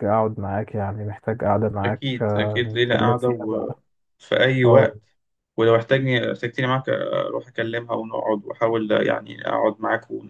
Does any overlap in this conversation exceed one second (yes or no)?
yes